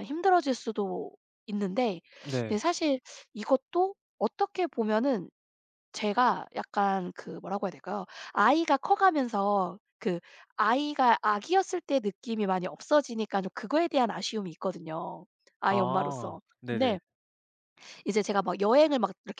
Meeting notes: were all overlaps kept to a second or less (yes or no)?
no